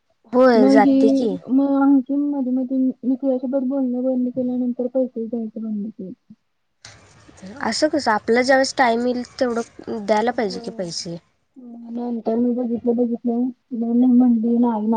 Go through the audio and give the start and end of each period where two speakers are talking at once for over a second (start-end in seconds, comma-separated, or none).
none